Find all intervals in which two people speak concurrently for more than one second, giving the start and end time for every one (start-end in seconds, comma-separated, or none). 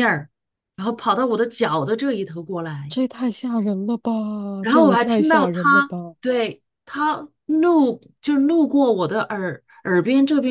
4.7-6.2